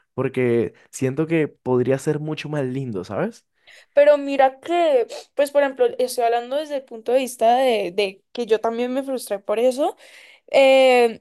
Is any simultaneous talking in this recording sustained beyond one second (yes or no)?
no